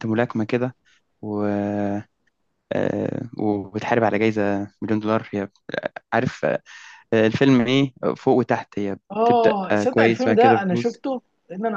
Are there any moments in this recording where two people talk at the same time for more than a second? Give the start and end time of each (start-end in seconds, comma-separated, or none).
9.1-11.0